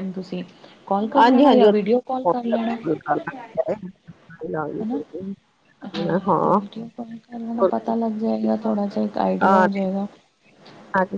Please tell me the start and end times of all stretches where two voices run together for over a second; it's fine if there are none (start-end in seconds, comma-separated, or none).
1.2-2.7